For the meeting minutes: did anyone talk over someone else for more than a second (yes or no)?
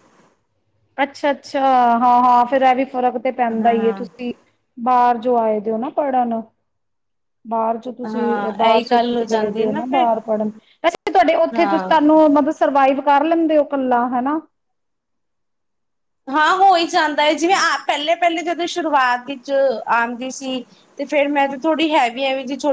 yes